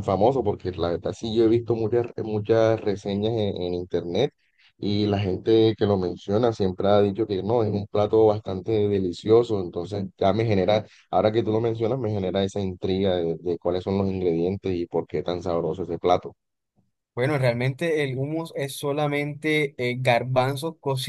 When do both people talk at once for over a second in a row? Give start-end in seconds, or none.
none